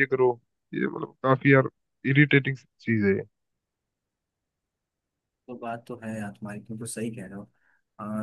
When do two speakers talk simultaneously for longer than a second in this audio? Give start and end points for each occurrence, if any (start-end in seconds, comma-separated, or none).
none